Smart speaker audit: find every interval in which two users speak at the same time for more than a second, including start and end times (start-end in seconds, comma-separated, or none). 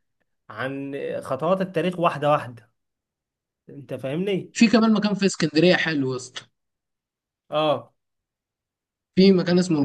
none